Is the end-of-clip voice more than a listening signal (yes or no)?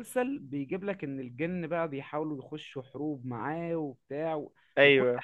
no